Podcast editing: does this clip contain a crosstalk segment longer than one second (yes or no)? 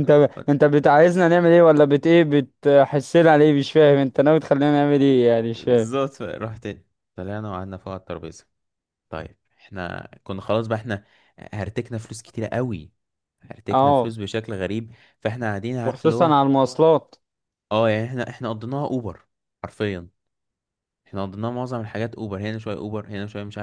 no